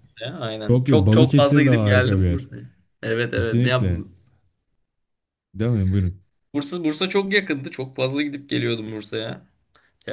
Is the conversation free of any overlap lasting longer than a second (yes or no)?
no